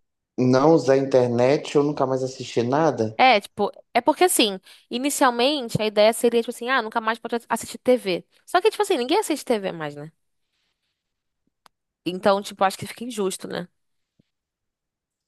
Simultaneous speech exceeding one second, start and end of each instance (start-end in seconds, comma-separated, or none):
none